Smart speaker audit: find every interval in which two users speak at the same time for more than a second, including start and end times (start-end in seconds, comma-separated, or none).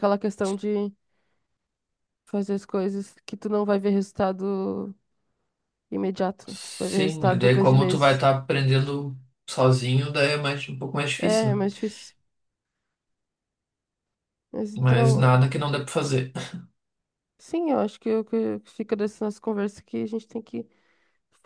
6.5-8.2